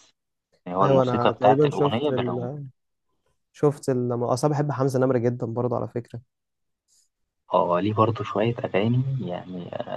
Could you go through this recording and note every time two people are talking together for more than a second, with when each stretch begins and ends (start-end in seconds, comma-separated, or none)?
0.8-2.5